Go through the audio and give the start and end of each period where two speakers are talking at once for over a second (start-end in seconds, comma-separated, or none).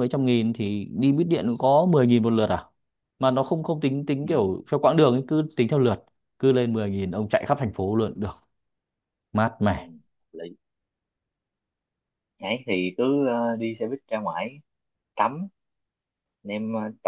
none